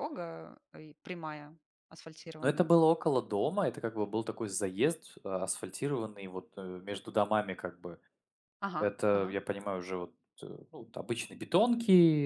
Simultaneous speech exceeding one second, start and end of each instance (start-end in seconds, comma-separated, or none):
none